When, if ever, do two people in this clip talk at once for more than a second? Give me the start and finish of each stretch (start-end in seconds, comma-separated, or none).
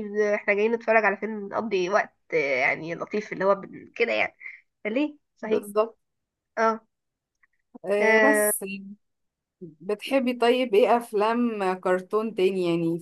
none